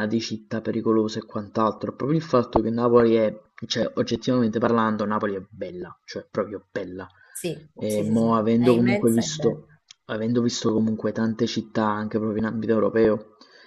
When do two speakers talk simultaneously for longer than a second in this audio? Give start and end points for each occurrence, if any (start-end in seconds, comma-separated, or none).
7.7-9.7